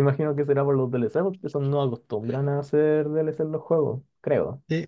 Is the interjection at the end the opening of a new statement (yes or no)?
yes